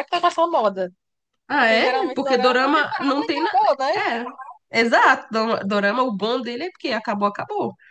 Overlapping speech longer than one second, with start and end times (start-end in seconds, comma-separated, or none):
1.6-3.6